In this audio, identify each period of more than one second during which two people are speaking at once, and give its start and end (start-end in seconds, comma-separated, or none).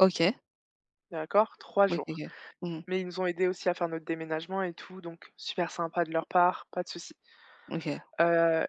none